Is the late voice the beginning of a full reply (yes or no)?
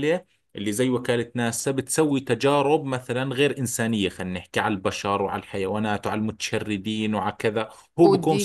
yes